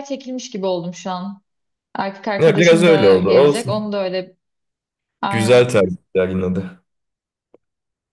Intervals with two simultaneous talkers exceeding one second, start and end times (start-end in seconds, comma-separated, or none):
2.4-3.9